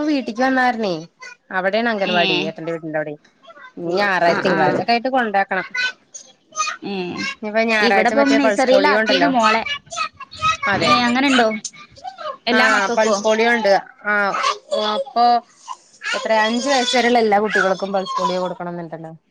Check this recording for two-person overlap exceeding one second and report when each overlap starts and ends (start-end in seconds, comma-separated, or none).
7.9-9.3